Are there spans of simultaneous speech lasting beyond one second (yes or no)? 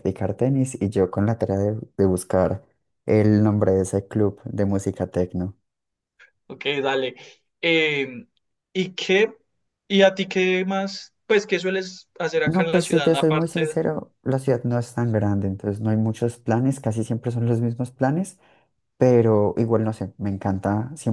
yes